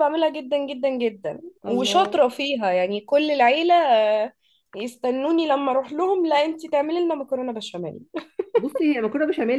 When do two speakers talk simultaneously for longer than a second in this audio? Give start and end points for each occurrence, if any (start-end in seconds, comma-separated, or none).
none